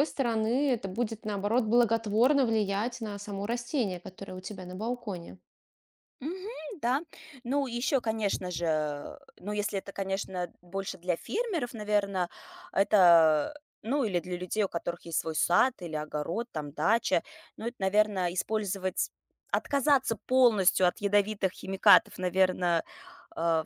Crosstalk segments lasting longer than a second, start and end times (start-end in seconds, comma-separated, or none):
none